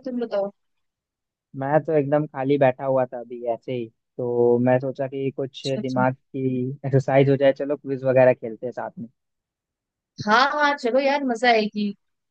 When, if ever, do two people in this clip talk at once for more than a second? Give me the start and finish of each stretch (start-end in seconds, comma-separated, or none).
none